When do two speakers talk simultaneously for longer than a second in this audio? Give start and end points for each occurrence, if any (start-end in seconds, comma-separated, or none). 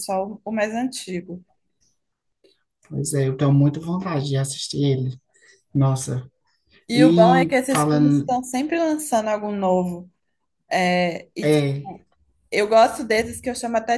6.9-8.4